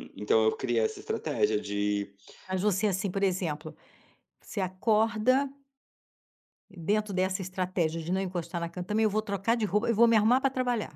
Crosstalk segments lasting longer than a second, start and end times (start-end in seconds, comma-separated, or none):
none